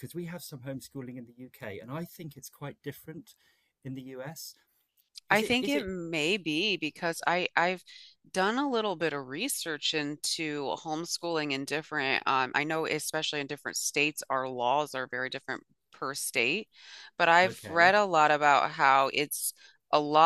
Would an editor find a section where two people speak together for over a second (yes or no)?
no